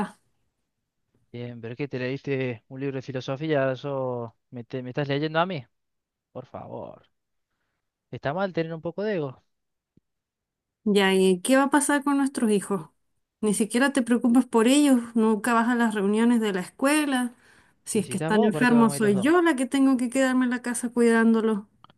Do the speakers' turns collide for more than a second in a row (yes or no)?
yes